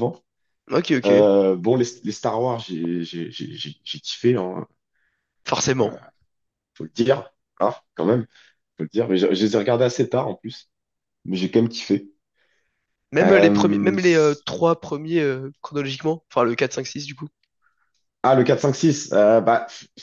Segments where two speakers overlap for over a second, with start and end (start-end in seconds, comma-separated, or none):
13.2-14.4